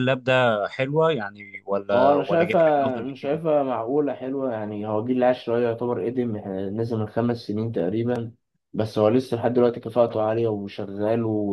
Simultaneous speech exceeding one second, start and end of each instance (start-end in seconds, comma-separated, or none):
1.9-3.4